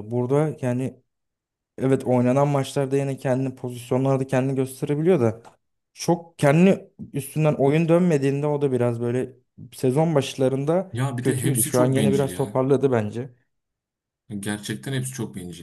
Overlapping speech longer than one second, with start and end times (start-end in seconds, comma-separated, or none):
10.9-12.6